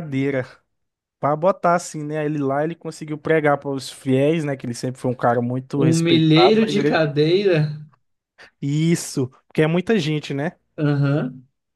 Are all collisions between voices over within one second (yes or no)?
no